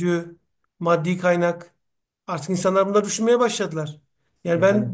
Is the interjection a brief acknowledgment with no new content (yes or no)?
yes